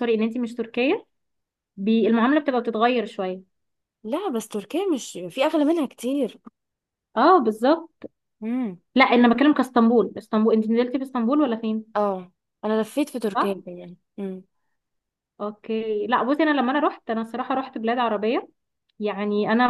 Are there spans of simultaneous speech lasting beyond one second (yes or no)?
no